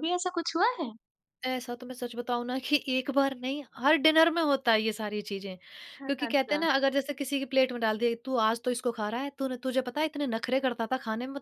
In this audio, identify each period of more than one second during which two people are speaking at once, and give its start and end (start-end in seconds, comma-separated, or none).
none